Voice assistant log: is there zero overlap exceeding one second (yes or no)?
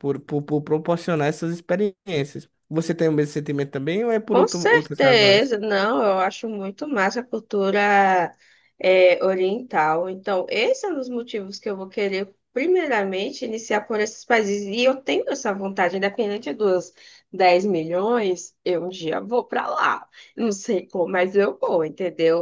no